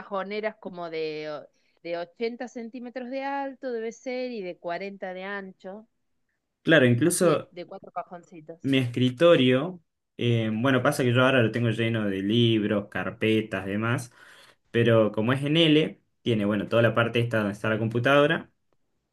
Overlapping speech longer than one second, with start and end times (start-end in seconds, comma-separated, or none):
none